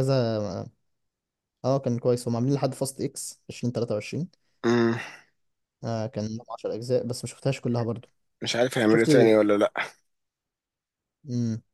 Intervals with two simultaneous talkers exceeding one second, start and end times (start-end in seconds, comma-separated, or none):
none